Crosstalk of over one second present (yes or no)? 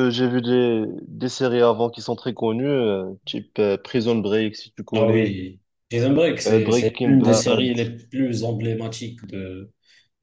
yes